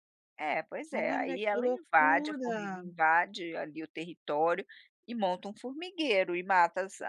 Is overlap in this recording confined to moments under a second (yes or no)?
no